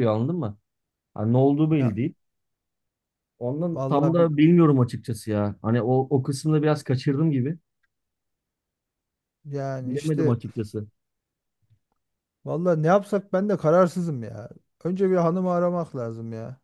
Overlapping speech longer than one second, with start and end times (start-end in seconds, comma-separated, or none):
none